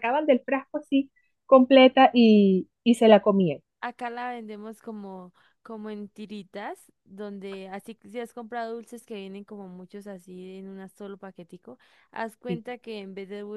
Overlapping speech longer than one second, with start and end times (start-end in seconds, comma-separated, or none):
none